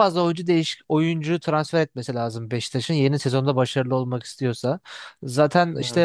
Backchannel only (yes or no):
yes